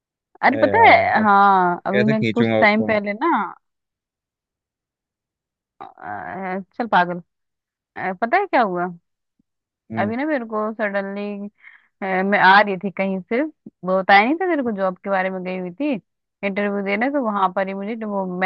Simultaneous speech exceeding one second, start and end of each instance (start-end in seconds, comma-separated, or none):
0.5-3.0